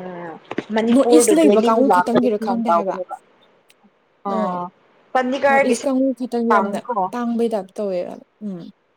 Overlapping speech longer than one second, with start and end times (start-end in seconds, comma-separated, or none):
0.9-3.0